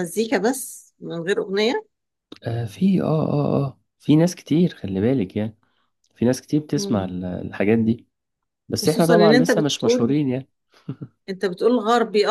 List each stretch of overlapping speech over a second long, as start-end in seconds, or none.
8.8-10.2